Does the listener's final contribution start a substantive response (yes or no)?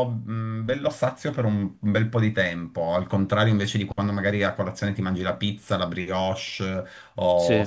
no